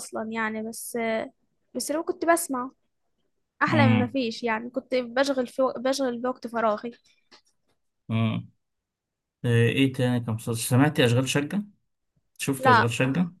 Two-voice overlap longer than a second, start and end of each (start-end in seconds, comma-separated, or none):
none